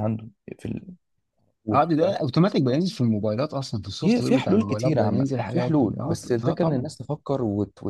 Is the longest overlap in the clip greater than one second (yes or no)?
yes